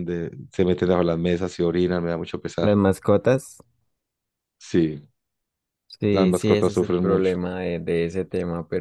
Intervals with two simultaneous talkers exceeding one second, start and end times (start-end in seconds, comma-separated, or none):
6.1-7.3